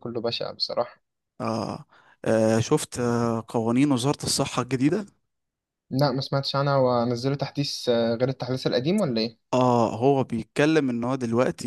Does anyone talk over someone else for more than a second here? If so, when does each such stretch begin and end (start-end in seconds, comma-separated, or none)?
none